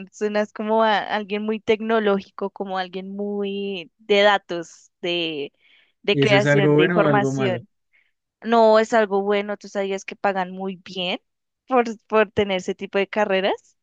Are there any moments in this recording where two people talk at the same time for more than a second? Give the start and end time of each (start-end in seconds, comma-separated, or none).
6.1-7.6